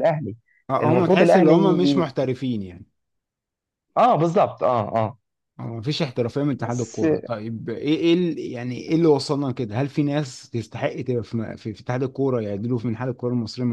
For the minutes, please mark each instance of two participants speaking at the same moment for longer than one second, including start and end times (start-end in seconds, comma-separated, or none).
0.8-2.1